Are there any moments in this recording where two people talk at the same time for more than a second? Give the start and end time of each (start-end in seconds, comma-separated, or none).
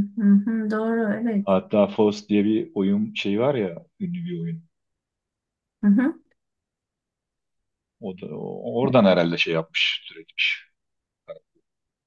none